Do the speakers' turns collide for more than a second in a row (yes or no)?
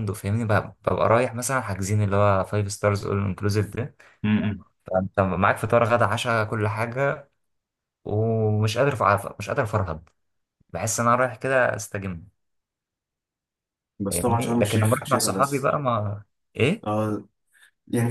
yes